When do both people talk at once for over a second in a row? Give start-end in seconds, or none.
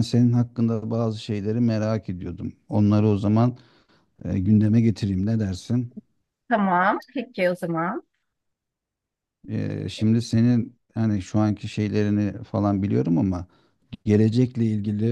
none